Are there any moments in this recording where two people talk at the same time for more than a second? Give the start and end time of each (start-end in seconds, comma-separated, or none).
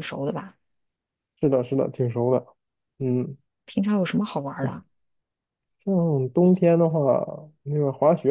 none